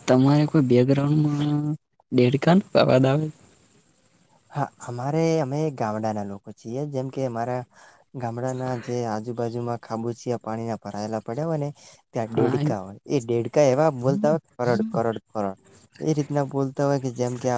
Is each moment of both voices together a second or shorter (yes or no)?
yes